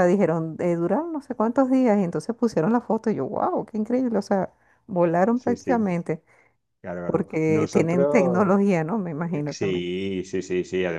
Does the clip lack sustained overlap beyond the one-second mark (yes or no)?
no